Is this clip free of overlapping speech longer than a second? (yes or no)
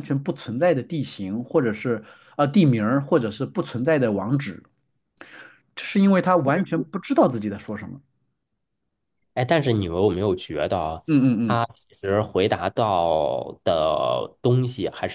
yes